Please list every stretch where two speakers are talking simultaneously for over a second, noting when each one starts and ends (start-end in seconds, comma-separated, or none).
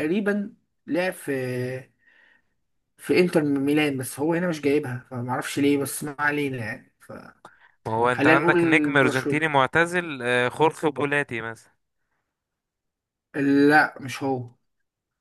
8.1-9.4